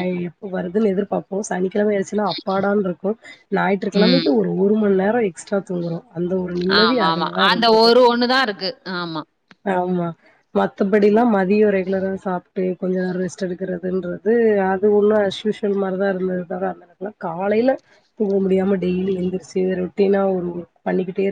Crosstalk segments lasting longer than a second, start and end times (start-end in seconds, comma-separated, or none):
none